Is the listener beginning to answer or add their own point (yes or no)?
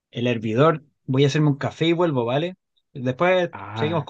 no